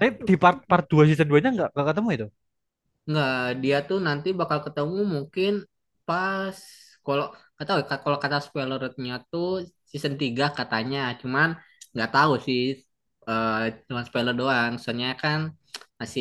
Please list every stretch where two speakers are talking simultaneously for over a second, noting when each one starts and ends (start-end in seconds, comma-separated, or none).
none